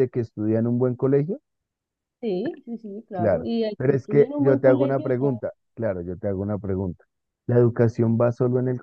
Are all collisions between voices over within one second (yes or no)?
no